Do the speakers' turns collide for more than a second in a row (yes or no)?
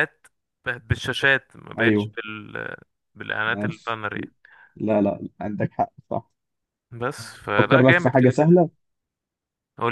yes